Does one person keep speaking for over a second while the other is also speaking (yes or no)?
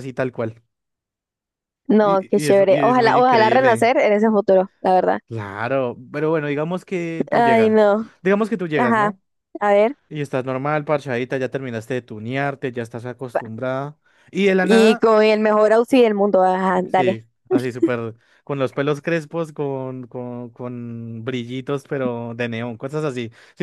yes